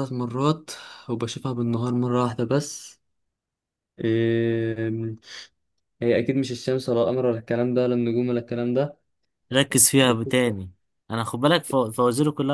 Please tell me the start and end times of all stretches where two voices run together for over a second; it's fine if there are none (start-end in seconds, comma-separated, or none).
none